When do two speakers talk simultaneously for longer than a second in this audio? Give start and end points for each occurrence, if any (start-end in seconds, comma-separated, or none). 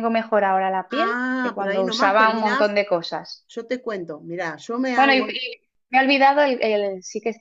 0.9-2.7